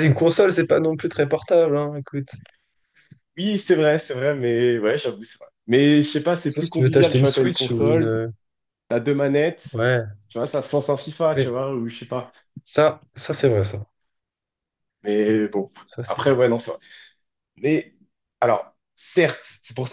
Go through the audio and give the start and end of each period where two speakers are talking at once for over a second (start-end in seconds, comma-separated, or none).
6.5-8.2